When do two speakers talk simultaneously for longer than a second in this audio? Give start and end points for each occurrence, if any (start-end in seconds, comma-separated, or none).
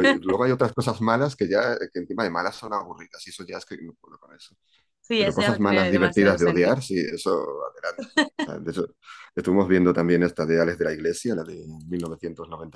5.2-6.8